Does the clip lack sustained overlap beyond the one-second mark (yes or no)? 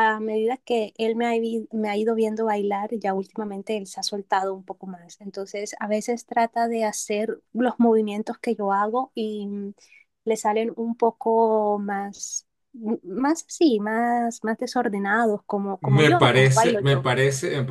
no